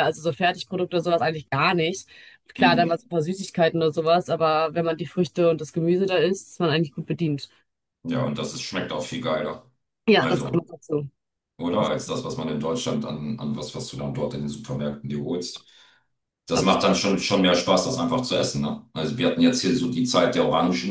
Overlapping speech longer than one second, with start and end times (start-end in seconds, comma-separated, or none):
none